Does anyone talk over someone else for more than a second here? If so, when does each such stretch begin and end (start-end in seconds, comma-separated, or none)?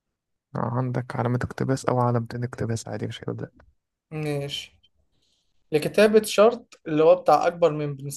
none